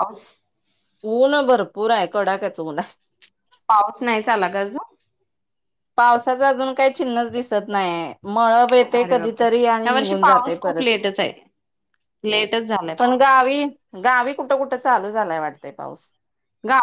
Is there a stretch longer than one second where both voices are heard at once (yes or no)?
no